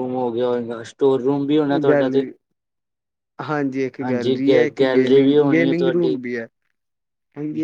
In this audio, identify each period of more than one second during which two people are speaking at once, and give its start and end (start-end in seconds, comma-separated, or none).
4.0-6.2